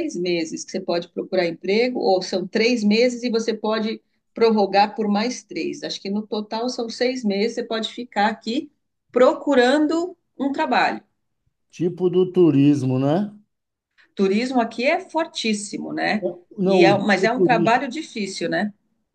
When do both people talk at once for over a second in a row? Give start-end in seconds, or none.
16.6-17.8